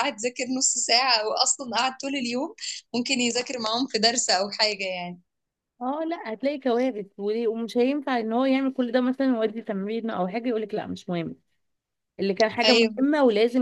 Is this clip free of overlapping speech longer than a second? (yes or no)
yes